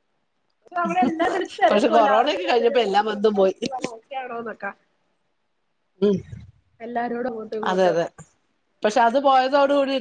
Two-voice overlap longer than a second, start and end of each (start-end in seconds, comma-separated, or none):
1.7-3.6